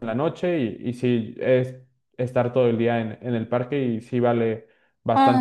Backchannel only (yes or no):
no